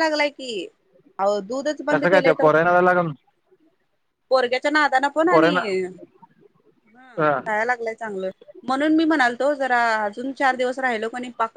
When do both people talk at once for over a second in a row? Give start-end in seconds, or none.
none